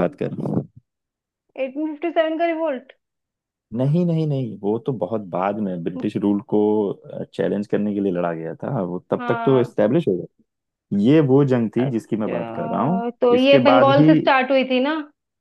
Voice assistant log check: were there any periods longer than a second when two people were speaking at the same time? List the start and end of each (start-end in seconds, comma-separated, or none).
11.8-14.1